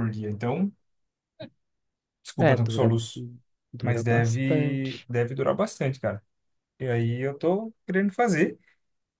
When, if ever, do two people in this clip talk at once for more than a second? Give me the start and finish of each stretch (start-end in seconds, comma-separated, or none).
3.8-5.1